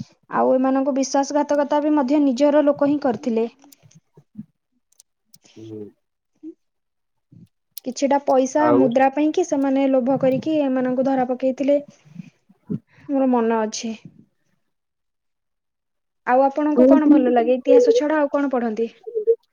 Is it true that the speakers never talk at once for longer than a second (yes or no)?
no